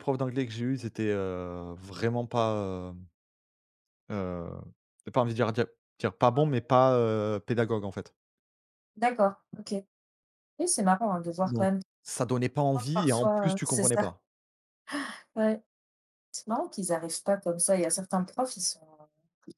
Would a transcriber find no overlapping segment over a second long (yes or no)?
no